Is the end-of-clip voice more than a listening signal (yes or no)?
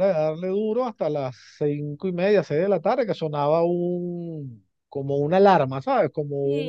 yes